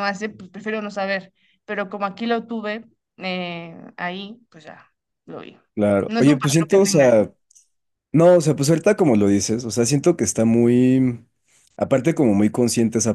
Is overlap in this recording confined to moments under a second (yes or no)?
no